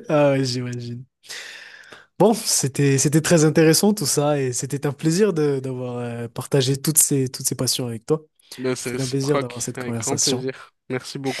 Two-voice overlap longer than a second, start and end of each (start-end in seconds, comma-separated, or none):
8.8-10.4